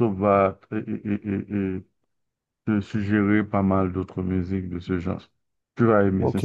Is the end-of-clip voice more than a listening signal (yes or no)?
yes